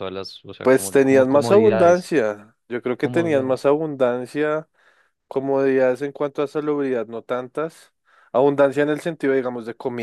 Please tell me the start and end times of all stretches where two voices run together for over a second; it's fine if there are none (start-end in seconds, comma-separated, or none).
0.6-2.1